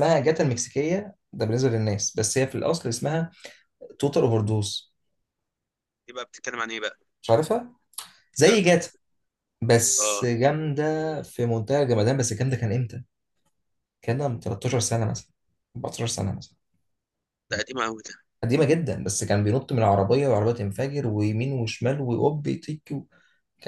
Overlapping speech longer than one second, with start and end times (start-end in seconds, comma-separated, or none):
none